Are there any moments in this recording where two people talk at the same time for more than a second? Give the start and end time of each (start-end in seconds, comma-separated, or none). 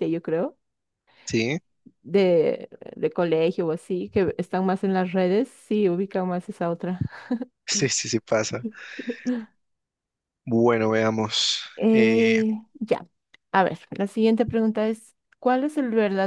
none